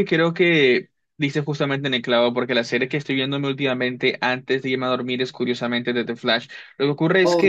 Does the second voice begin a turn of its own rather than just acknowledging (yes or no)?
no